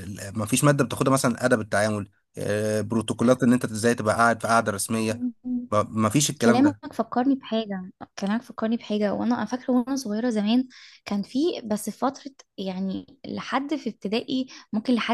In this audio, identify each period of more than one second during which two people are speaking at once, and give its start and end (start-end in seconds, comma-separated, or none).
none